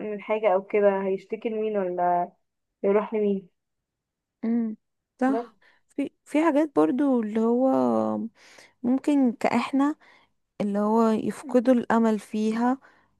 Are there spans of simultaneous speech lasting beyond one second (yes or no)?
no